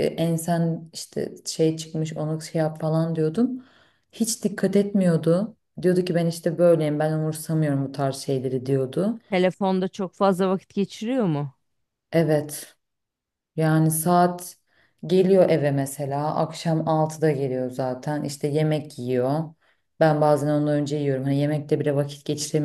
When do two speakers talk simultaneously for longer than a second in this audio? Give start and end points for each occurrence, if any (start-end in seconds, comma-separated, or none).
none